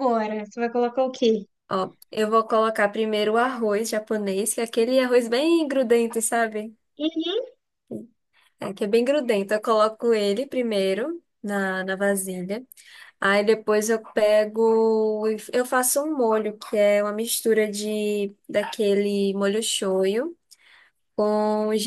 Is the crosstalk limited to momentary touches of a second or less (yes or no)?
yes